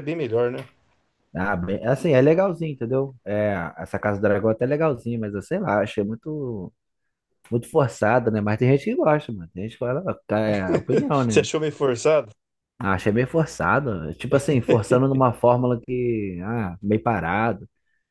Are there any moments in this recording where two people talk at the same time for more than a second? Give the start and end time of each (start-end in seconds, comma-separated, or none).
none